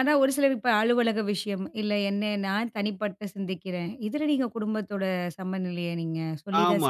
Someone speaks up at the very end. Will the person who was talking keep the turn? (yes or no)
no